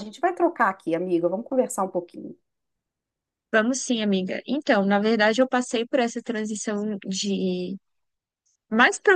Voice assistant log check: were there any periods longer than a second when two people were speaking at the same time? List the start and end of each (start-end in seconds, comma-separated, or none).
none